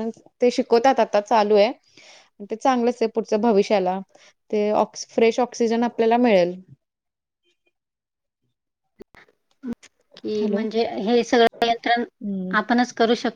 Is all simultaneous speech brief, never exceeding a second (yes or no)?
yes